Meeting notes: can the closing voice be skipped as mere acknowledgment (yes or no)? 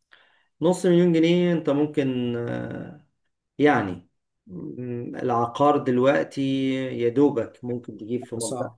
yes